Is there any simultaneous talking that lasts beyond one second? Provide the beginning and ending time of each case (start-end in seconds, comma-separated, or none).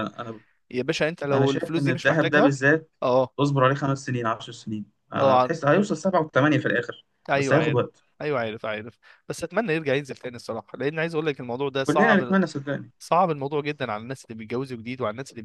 1.3-2.5